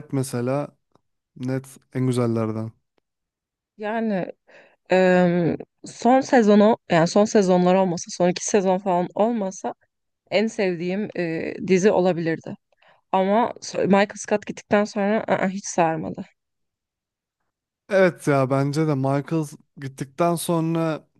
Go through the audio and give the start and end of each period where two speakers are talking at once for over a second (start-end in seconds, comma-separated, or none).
none